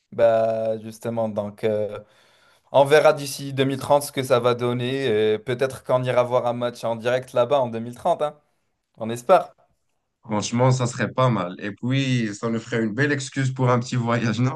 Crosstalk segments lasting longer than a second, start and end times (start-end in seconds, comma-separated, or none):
none